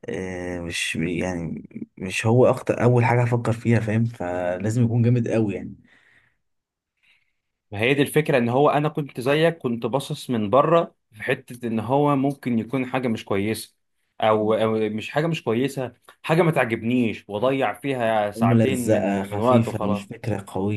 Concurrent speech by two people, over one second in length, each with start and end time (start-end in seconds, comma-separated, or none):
18.4-20.0